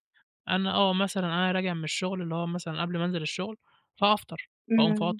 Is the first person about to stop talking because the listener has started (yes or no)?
no